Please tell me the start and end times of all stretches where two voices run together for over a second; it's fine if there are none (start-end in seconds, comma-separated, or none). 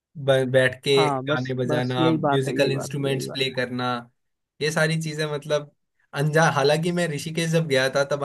1.3-3.4